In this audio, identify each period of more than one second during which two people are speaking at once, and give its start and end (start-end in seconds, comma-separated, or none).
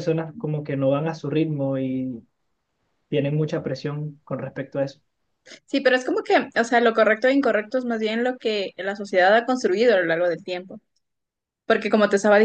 none